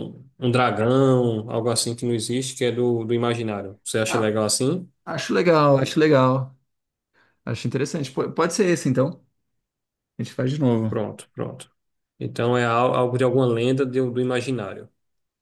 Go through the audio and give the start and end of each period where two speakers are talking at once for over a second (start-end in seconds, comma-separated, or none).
none